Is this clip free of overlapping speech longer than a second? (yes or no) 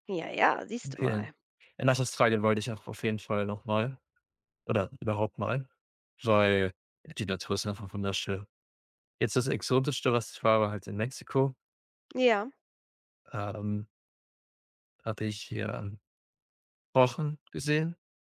yes